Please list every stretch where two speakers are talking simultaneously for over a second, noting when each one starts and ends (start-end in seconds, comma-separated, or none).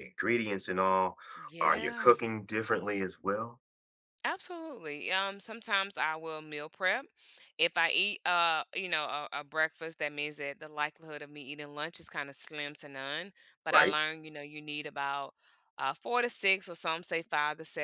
none